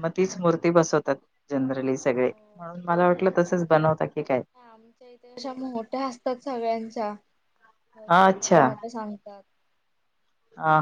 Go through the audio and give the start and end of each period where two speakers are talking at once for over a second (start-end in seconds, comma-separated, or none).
none